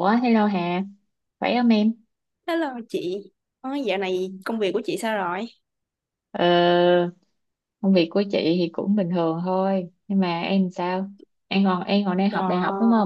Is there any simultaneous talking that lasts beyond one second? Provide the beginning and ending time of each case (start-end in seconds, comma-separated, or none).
none